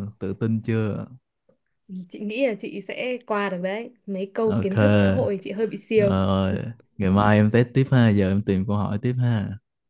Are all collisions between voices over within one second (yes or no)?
yes